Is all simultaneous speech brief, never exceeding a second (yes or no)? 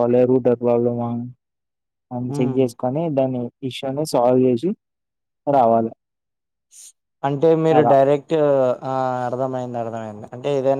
yes